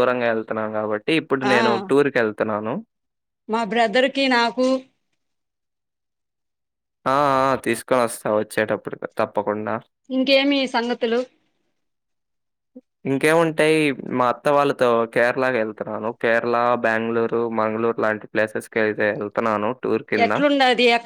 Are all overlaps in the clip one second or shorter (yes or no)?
yes